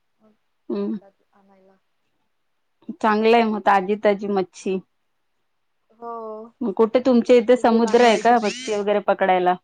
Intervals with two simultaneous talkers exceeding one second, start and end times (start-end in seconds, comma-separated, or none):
7.3-8.7